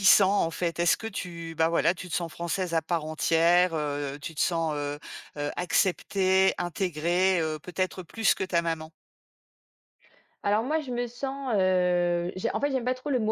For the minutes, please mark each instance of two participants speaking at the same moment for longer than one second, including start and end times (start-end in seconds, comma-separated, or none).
none